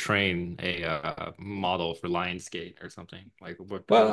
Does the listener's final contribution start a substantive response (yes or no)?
yes